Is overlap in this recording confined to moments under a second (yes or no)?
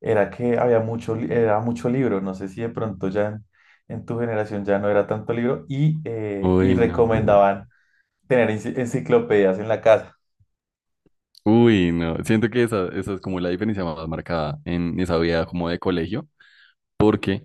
yes